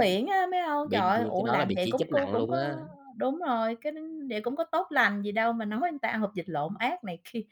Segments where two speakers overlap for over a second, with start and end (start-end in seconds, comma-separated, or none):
0.8-2.7